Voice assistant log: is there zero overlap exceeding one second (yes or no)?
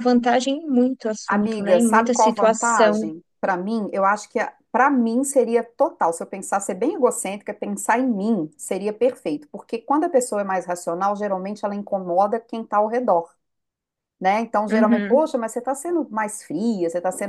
no